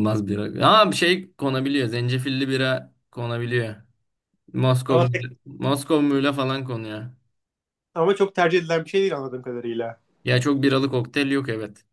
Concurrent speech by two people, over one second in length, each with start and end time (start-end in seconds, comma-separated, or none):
none